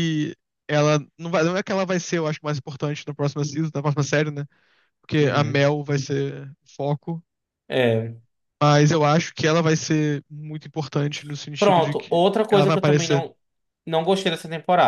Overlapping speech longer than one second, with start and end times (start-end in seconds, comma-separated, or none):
11.6-13.2